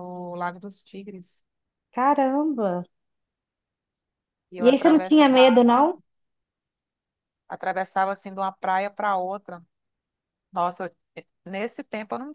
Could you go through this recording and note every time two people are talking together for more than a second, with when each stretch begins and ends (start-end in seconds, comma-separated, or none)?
4.6-5.8